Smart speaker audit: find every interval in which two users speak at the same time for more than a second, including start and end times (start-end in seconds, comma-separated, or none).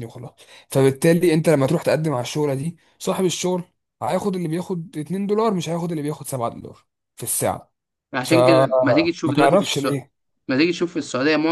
8.2-10.0